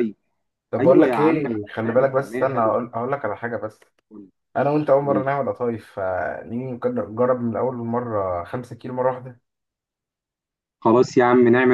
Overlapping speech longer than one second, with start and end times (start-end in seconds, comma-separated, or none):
0.8-2.8